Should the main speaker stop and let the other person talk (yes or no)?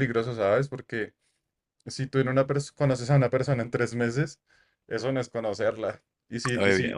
no